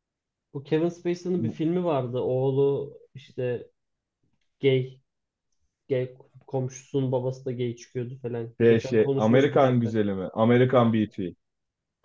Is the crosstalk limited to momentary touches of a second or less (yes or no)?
no